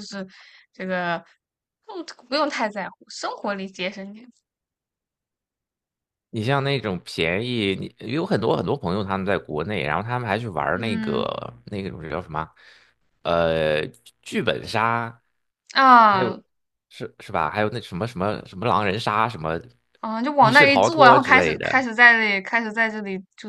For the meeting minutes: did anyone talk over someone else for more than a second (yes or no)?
yes